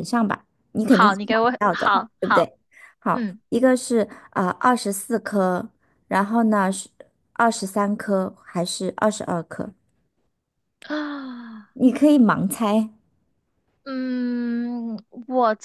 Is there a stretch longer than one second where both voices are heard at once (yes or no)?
yes